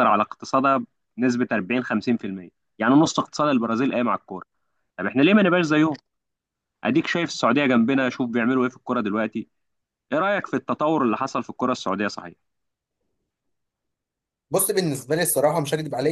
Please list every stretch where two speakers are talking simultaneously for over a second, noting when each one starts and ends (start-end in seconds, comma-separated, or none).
none